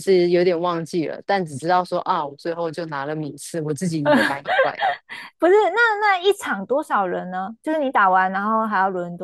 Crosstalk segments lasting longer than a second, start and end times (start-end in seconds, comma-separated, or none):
none